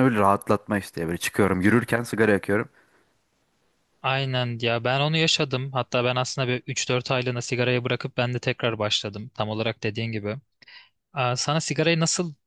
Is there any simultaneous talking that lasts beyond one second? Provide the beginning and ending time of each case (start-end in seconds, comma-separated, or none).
none